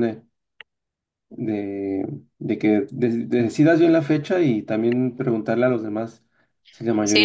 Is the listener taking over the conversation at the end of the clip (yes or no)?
yes